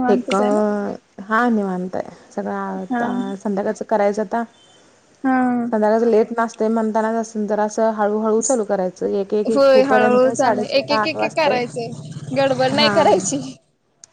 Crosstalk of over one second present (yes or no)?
yes